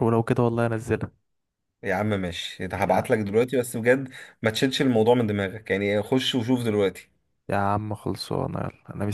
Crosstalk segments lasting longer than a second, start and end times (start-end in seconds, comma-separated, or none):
none